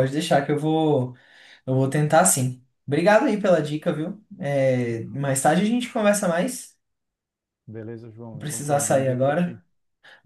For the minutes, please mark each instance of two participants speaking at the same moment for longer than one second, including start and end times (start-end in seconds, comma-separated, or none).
8.3-9.6